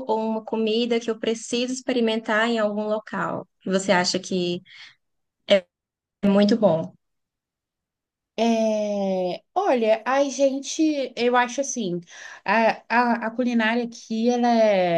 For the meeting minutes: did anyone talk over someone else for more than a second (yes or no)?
no